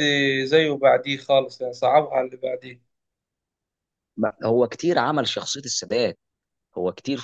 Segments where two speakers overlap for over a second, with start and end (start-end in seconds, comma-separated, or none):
none